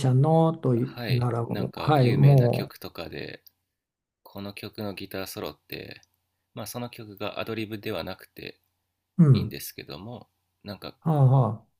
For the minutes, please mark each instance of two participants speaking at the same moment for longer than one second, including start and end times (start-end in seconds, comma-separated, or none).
0.8-2.7